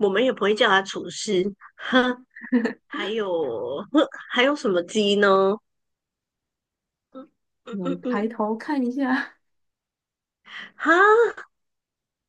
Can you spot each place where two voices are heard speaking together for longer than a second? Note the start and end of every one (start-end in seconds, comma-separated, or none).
none